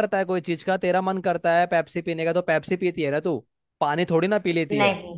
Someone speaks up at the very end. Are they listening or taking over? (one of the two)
listening